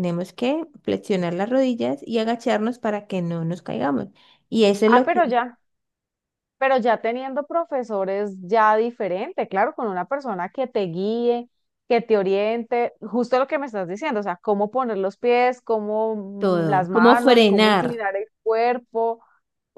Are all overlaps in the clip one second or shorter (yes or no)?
no